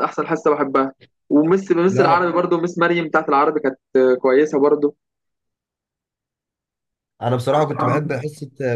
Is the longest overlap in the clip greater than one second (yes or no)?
no